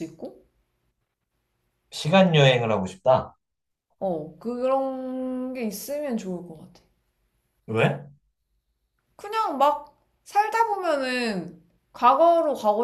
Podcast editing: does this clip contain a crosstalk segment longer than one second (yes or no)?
no